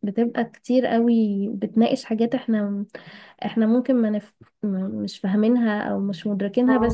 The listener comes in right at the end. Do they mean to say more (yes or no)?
no